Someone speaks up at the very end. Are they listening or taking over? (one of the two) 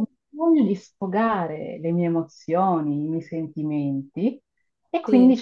listening